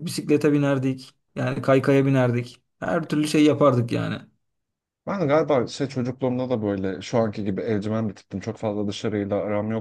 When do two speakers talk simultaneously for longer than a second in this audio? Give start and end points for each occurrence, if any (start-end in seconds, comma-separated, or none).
none